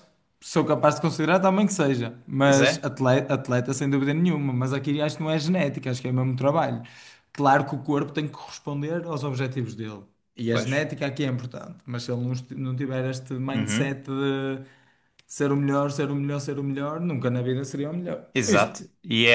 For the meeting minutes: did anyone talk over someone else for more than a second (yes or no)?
no